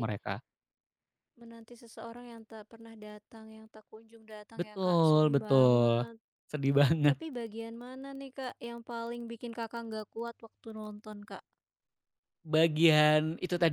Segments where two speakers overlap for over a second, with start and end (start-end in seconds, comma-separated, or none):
4.5-6.0